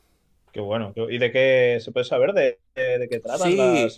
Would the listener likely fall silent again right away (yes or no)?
no